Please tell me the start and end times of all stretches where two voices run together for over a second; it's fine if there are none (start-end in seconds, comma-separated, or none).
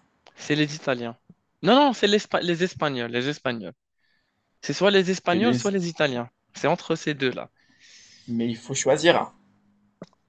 none